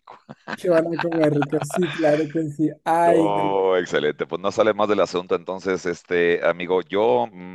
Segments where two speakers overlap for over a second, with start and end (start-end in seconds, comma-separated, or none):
none